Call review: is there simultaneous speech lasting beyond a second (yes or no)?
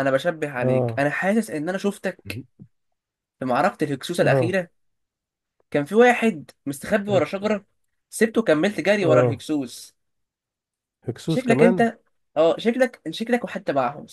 no